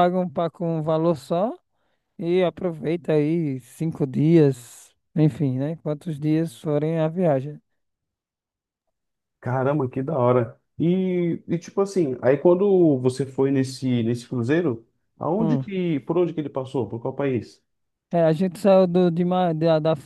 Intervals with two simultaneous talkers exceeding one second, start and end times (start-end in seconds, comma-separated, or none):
none